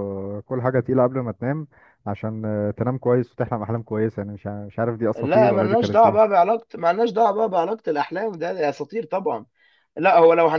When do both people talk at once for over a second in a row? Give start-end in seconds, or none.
5.2-6.4